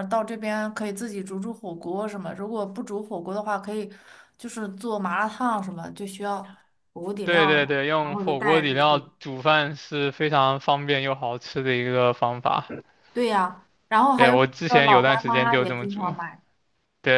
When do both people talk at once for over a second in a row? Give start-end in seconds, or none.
7.2-9.0, 14.2-16.1